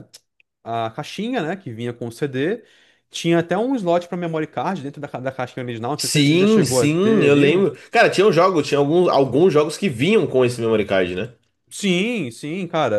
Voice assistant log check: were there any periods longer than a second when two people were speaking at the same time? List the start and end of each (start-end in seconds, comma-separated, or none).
6.0-7.7